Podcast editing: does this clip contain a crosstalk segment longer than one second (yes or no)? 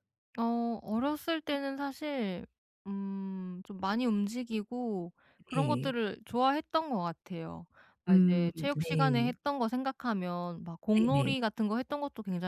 yes